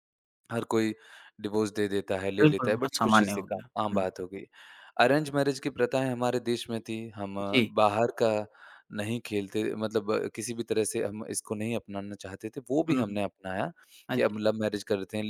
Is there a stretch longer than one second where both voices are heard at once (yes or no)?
yes